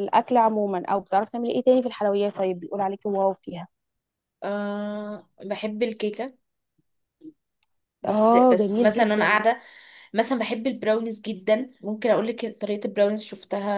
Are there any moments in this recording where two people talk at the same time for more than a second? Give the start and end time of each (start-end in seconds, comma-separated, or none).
8.1-9.4